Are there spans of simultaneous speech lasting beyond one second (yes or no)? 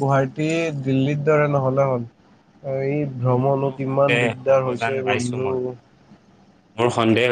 yes